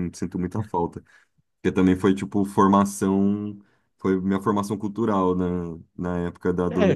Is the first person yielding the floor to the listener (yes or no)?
yes